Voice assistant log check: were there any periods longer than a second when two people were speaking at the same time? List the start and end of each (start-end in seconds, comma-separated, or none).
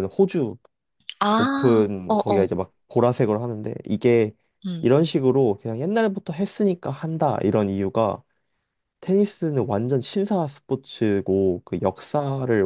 1.3-2.5